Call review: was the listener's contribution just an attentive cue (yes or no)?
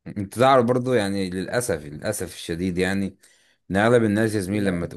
yes